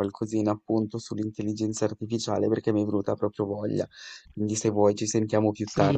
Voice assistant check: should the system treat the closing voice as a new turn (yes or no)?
yes